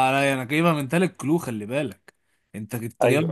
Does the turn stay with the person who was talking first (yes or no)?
yes